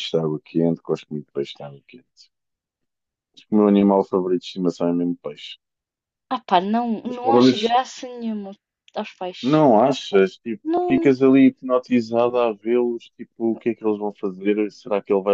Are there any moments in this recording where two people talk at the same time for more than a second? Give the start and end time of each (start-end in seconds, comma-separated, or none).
none